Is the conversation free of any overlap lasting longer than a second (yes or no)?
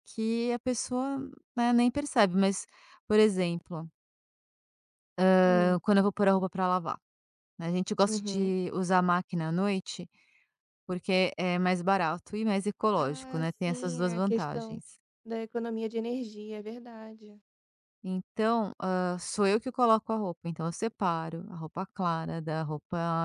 no